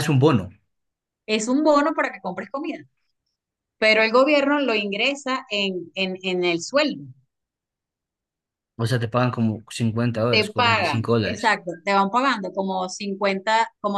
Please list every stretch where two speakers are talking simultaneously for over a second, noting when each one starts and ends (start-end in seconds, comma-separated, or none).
10.3-11.6